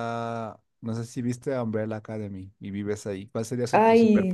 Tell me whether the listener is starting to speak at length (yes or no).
yes